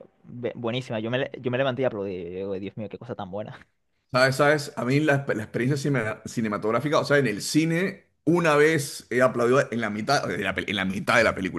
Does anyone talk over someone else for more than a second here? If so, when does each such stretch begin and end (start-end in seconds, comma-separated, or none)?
none